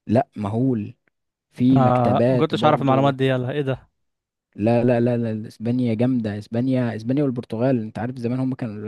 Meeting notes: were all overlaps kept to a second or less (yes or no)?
no